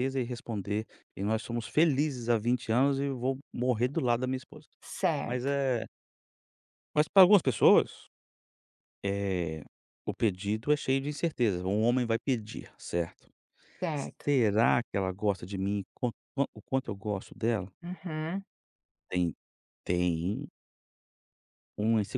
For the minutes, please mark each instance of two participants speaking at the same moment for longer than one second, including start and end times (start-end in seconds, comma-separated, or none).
none